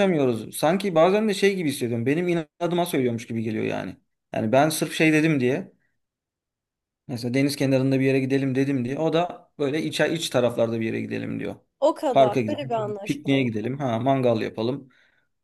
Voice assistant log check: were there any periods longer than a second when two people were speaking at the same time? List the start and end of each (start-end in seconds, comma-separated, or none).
12.1-13.5